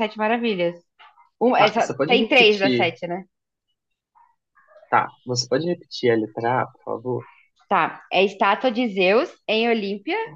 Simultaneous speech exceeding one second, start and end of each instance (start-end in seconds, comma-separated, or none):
1.6-2.9